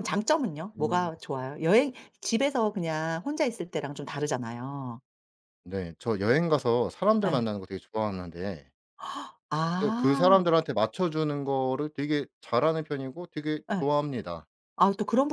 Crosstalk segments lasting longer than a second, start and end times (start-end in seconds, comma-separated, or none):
none